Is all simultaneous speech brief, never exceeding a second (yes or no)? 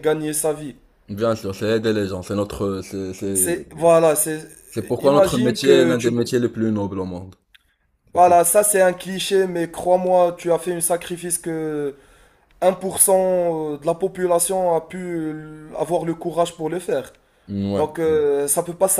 no